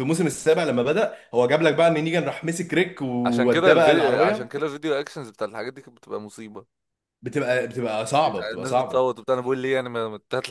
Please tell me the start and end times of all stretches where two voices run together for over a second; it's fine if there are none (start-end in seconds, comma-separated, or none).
3.2-4.5